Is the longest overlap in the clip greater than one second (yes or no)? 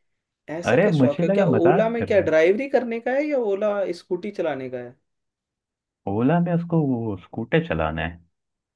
yes